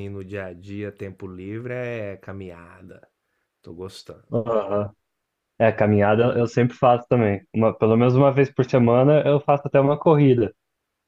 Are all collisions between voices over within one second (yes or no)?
yes